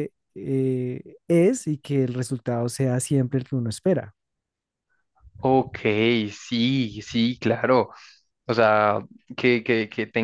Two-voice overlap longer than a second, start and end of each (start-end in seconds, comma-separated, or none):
none